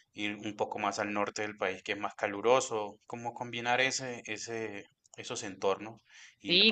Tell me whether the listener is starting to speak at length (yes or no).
yes